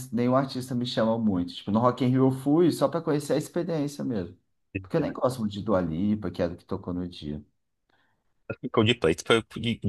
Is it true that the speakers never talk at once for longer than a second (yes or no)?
yes